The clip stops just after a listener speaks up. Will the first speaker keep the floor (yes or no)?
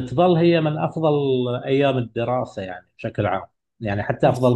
yes